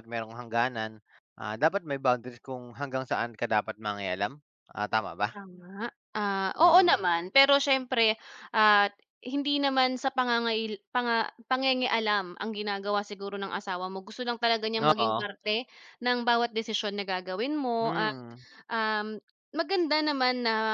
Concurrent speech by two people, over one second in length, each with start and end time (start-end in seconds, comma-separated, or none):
none